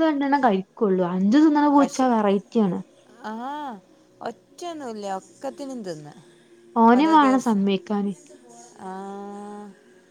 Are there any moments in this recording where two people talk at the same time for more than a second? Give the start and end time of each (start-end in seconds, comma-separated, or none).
none